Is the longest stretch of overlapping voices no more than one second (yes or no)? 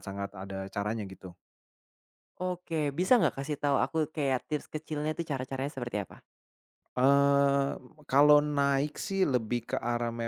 yes